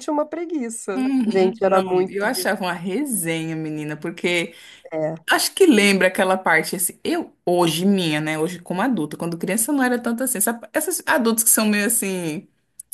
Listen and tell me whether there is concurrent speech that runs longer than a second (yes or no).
yes